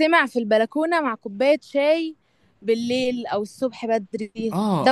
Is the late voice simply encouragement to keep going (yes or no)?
no